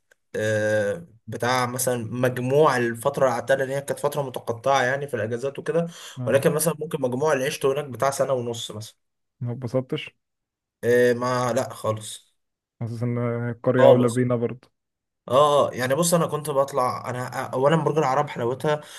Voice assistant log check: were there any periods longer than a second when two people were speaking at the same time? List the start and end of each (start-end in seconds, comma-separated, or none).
none